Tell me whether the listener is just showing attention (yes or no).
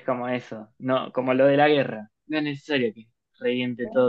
yes